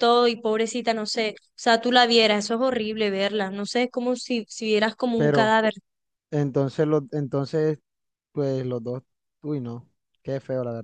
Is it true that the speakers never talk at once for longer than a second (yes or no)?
yes